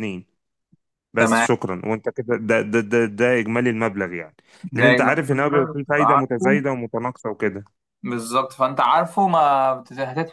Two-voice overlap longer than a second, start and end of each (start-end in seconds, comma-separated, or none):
4.8-6.6